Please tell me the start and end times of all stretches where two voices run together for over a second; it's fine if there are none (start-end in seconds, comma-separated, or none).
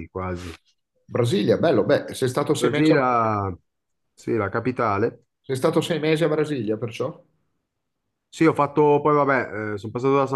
none